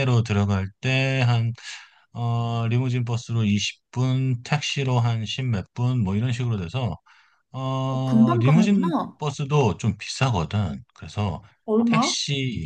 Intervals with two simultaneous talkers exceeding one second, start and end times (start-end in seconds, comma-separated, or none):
7.9-9.2